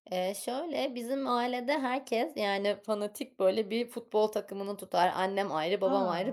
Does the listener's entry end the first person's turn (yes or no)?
no